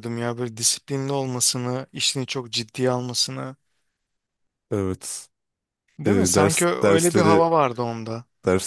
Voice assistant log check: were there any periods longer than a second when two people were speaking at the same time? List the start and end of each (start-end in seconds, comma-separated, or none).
6.1-7.4